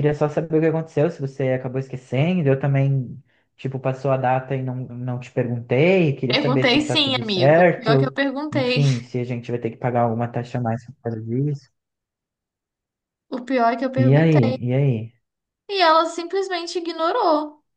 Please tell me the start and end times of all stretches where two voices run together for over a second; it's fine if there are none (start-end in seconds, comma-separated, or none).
6.3-8.8